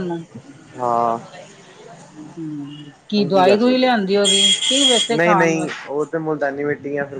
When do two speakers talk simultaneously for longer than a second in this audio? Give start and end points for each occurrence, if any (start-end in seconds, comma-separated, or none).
3.2-5.9